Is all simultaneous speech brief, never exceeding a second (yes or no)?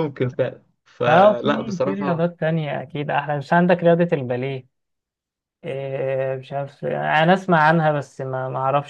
no